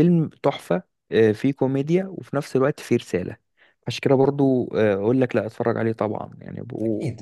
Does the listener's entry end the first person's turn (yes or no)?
yes